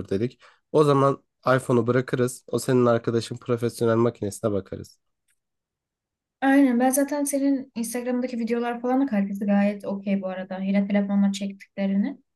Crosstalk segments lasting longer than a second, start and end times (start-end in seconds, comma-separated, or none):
none